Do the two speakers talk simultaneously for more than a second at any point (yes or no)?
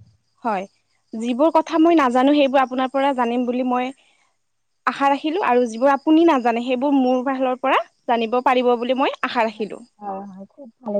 no